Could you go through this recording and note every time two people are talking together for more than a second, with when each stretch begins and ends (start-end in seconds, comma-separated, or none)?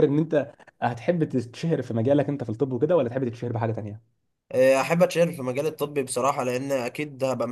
none